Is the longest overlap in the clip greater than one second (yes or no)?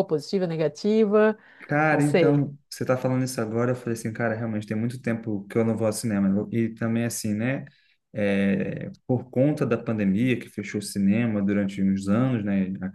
no